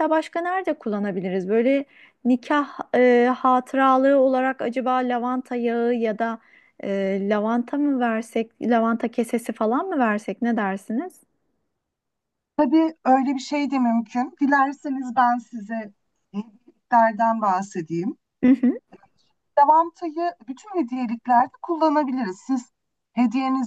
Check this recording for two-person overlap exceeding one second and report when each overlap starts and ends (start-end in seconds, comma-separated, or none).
none